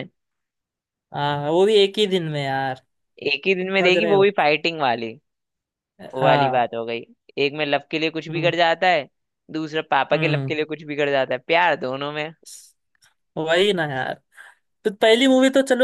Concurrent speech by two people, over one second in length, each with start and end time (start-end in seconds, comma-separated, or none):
none